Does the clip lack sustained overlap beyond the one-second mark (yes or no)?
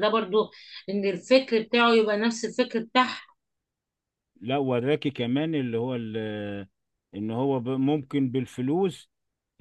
yes